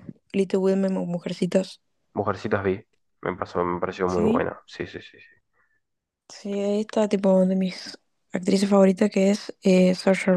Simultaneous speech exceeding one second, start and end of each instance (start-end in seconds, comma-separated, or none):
none